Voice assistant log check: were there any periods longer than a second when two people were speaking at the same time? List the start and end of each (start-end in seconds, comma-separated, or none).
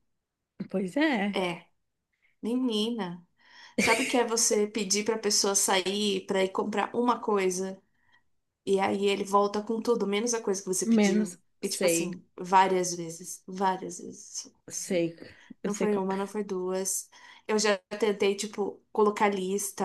10.8-12.1